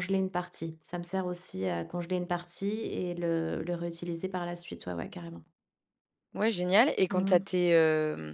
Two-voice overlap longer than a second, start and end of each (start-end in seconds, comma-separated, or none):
none